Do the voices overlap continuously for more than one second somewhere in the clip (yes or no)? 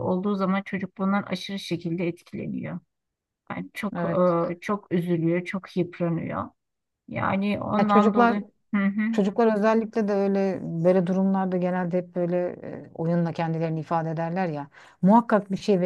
no